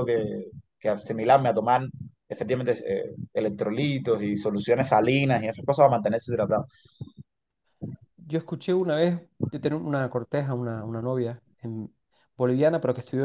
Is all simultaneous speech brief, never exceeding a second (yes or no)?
yes